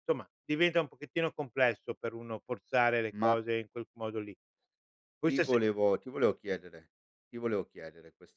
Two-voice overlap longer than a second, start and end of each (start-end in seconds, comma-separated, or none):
none